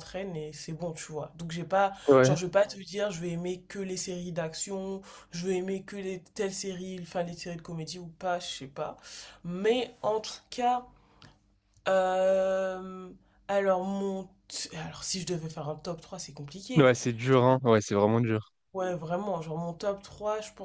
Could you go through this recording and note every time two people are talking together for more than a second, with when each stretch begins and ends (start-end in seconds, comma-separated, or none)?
none